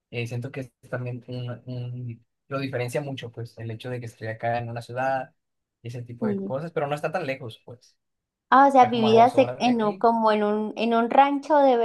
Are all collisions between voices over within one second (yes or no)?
no